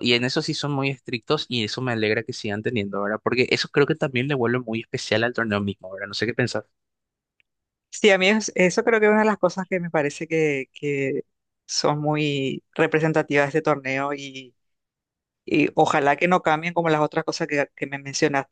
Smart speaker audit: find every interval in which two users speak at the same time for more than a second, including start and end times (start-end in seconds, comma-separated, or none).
none